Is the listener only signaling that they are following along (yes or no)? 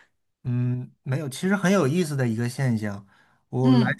yes